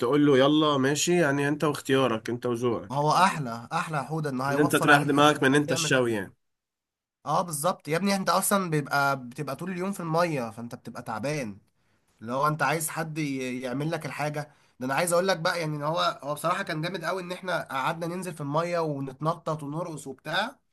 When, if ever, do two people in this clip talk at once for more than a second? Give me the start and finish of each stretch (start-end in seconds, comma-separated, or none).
4.5-6.0